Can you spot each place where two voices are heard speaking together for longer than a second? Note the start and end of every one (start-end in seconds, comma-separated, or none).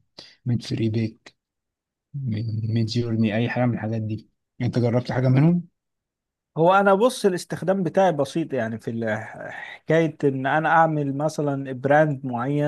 none